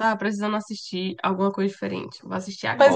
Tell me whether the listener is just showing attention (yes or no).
no